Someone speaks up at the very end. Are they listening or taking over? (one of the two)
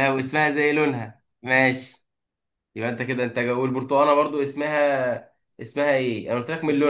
taking over